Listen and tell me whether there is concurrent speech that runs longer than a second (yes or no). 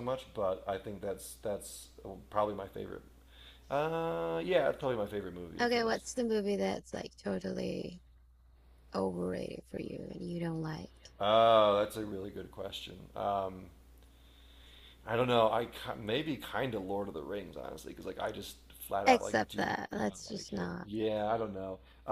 yes